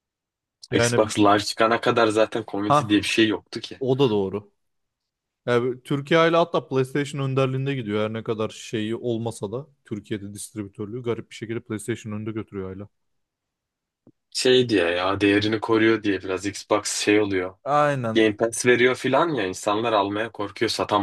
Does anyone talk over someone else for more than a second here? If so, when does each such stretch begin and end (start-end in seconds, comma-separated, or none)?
none